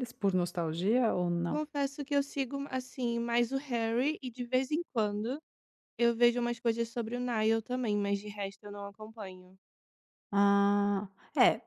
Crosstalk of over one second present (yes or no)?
no